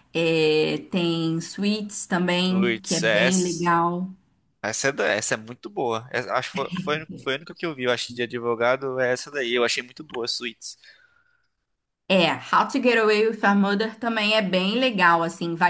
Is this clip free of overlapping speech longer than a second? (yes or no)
no